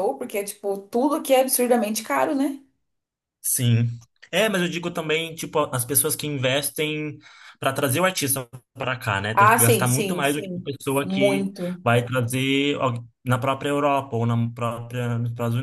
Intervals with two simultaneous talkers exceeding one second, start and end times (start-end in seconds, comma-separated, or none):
9.3-11.8